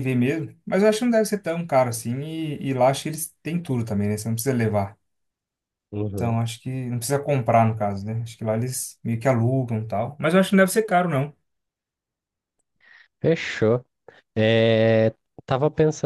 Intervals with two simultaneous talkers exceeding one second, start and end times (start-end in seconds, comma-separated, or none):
none